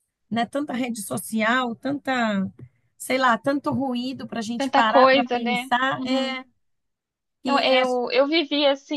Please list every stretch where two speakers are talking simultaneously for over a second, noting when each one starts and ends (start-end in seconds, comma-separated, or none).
4.6-6.4